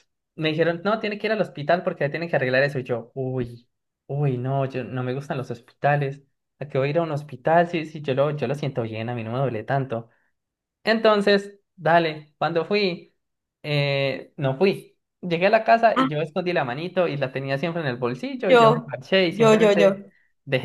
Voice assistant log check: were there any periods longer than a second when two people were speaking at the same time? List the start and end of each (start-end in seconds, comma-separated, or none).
18.5-20.1